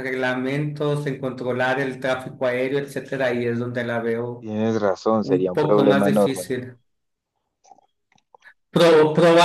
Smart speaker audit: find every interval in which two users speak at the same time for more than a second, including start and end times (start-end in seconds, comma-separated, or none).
5.2-6.5